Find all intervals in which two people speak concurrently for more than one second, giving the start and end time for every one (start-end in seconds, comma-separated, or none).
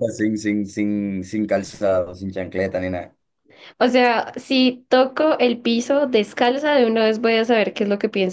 none